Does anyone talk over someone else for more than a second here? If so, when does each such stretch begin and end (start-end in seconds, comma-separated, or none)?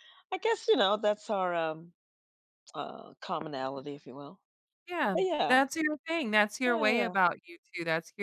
none